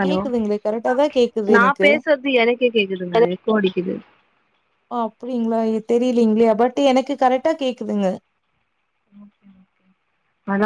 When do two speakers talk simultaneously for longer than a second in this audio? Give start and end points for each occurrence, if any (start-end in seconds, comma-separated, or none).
none